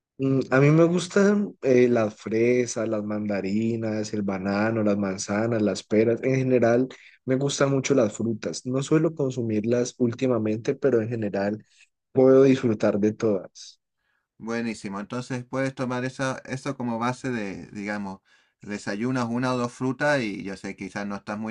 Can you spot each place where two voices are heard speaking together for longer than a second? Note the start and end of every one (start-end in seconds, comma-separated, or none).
none